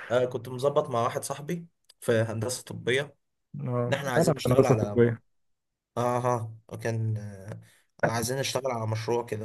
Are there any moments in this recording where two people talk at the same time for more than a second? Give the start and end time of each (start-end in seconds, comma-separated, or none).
3.9-5.2